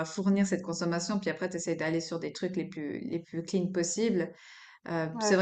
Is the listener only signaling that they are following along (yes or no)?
yes